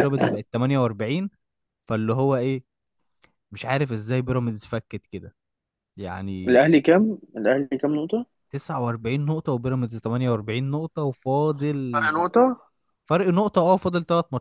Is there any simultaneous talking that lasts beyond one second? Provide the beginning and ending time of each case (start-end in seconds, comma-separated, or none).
none